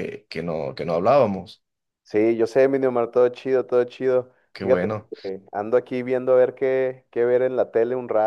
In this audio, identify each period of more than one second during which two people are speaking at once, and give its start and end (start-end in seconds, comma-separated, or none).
none